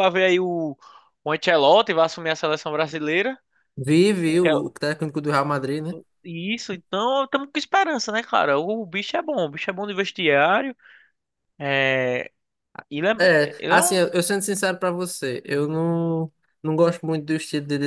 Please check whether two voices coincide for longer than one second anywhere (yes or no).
no